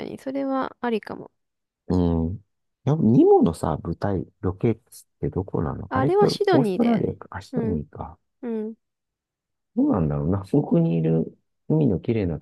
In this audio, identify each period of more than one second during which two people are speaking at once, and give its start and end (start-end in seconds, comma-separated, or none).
5.9-7.8